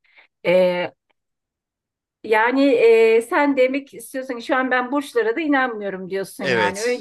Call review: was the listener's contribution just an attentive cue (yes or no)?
no